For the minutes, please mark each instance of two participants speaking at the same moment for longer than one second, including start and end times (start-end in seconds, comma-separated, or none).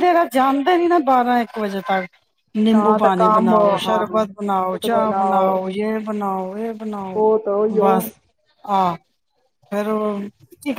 2.7-4.8